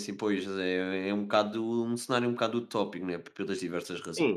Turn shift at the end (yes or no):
yes